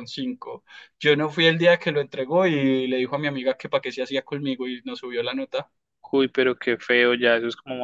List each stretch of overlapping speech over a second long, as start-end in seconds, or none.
none